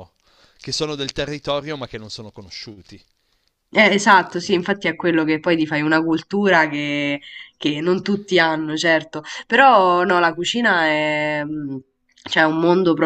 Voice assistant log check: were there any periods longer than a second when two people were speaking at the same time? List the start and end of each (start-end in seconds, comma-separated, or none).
none